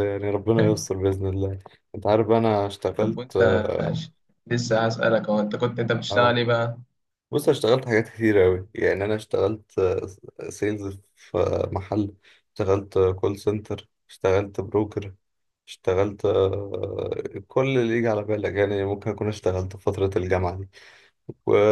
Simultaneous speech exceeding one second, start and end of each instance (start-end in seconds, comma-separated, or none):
none